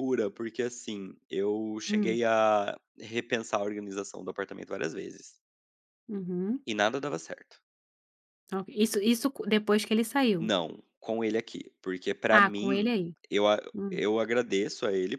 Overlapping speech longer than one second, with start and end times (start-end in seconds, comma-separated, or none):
none